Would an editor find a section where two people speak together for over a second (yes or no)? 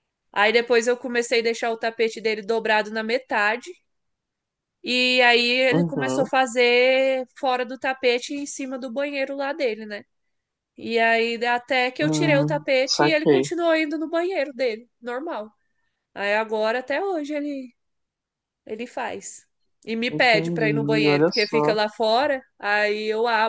yes